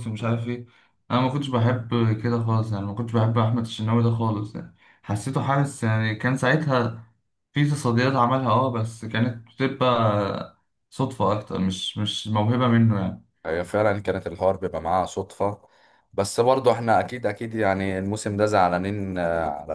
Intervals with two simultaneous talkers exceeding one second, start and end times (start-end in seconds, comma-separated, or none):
none